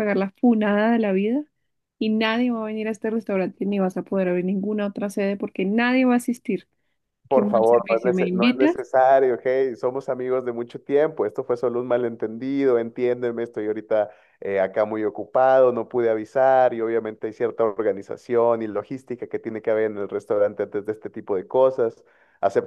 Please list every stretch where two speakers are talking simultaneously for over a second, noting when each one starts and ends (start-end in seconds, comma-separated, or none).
7.3-8.8